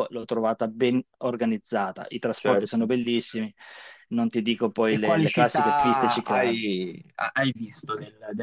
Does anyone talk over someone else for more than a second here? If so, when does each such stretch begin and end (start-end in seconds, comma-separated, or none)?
4.9-6.6